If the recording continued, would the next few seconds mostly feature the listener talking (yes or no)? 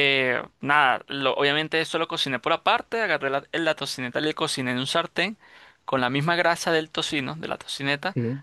no